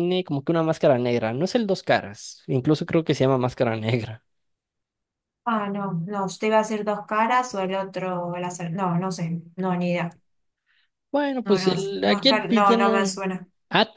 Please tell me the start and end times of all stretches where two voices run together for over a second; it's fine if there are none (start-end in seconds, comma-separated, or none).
11.5-13.2